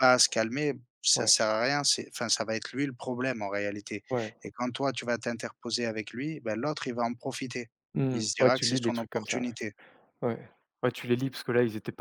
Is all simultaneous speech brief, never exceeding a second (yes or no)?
no